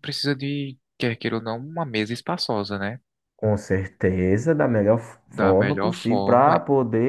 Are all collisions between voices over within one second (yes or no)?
no